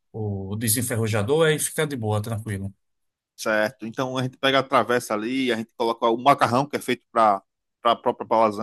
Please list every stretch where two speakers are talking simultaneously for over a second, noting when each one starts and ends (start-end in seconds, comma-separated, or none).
none